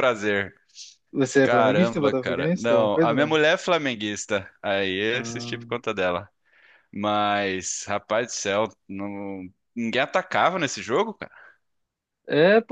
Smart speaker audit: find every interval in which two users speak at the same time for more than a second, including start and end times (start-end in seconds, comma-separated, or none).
1.4-3.4